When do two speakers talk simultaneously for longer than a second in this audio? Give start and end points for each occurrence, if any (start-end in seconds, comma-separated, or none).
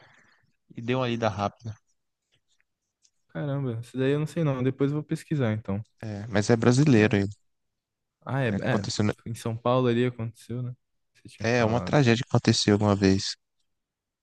none